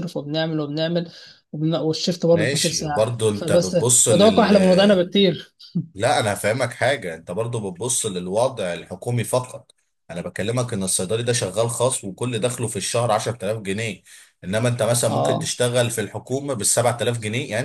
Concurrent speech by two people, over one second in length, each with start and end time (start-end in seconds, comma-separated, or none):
2.3-4.5